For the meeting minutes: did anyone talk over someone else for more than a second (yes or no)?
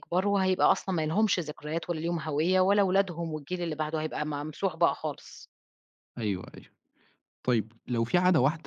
no